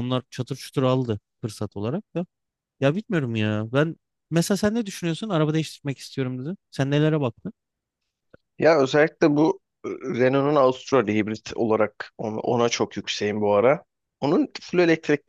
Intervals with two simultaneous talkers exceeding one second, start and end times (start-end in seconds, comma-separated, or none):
none